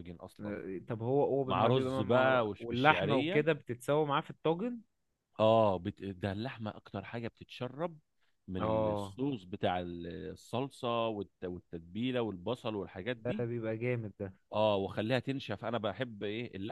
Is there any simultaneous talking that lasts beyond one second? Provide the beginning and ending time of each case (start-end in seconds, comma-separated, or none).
1.4-3.4